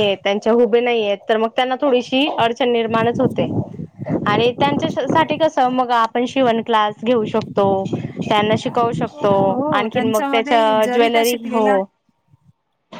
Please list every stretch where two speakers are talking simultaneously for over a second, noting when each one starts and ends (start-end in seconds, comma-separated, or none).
9.5-11.7